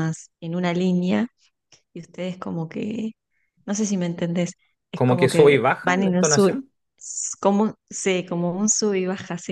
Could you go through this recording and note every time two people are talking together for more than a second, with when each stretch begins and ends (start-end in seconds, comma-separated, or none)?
4.9-6.5